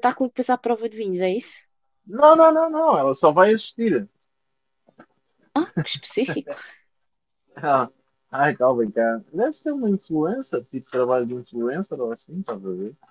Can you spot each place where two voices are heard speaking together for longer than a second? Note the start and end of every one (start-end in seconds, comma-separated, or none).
none